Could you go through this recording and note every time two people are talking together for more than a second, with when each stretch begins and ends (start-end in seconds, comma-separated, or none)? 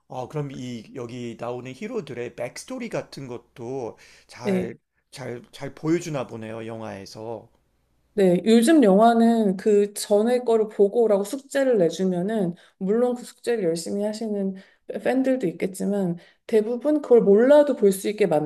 none